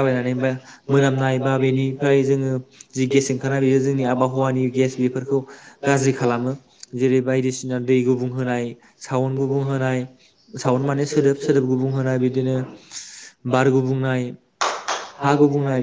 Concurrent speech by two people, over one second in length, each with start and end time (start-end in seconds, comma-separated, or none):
none